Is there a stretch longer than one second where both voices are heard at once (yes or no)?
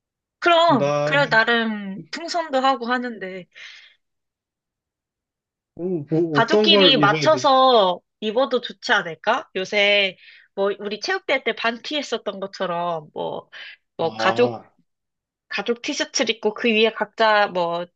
yes